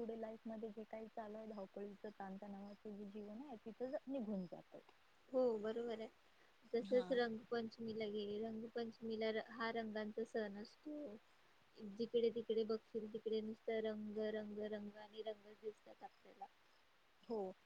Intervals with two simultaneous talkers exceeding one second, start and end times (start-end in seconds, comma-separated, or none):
none